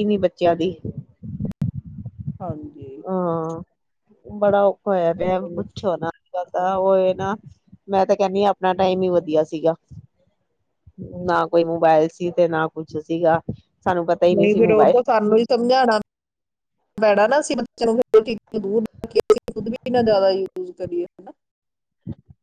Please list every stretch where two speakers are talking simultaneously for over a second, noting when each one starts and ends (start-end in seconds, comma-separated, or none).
none